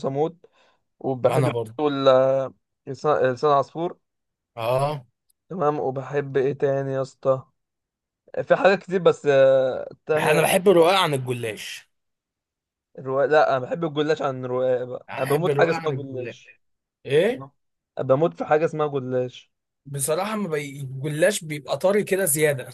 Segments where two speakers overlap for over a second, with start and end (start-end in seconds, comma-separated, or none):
15.1-16.4